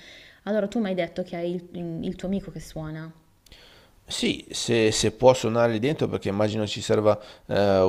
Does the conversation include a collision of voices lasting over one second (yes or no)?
no